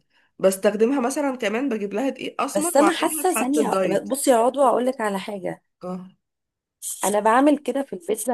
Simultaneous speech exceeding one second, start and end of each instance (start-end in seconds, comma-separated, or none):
2.5-4.1